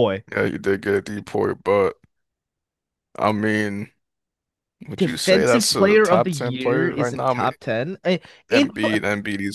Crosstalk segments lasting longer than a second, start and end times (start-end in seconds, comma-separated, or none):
5.0-7.5